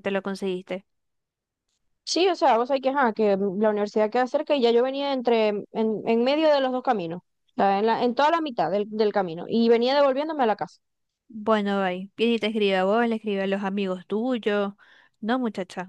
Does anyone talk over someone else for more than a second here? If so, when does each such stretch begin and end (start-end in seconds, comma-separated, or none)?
none